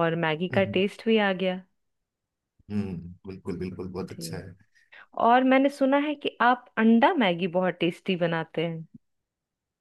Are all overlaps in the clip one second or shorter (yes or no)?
yes